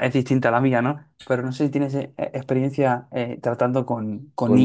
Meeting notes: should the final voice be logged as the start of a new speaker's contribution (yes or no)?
yes